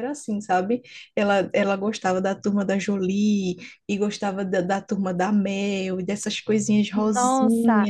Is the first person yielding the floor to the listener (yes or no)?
yes